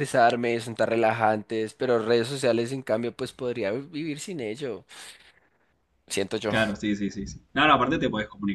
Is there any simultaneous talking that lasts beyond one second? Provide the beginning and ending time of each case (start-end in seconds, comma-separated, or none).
none